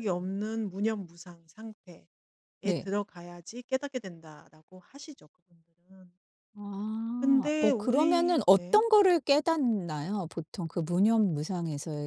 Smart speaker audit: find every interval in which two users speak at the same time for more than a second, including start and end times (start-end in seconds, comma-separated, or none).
7.2-8.8